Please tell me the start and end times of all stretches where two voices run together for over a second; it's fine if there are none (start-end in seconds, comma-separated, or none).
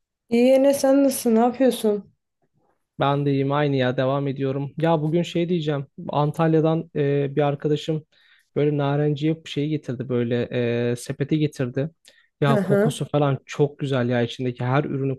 none